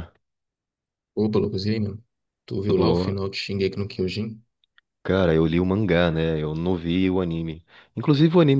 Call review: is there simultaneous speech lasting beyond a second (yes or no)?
no